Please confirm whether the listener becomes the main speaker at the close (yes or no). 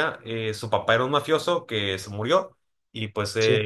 no